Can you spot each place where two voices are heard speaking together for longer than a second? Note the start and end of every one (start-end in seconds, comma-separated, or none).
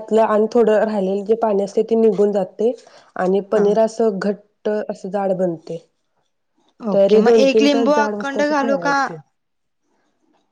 6.9-8.9